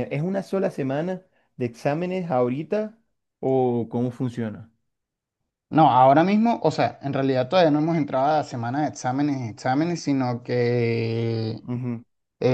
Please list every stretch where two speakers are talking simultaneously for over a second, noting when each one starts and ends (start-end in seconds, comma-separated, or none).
none